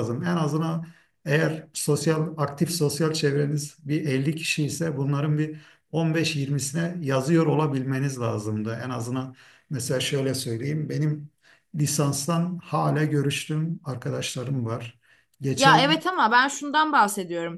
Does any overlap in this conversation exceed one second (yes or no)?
no